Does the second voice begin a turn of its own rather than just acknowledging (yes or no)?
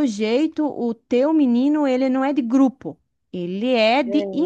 no